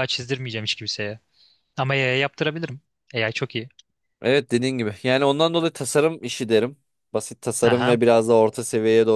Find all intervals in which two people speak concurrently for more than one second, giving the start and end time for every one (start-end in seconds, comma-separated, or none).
none